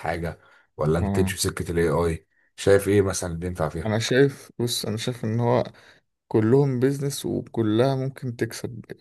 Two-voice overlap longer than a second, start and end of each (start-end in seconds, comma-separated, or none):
none